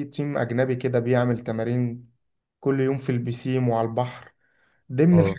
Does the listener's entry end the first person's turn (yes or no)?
no